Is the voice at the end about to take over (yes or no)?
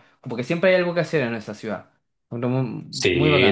yes